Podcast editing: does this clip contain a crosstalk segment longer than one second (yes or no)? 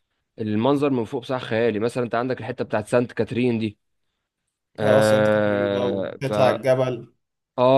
yes